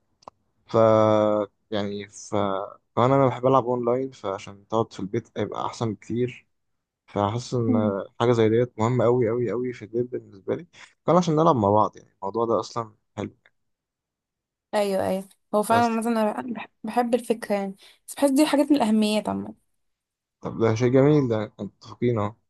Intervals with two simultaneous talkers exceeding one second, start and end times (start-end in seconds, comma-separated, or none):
none